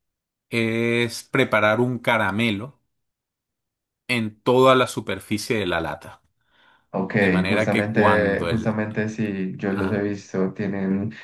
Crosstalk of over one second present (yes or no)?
yes